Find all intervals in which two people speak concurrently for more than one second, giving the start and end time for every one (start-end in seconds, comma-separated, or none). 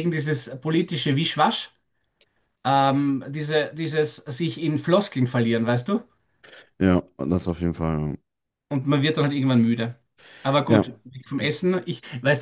none